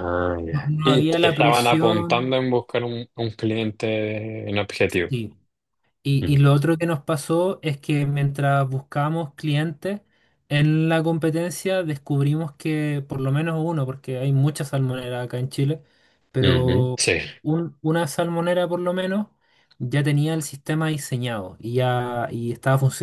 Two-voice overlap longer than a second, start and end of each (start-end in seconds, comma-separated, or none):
0.5-2.4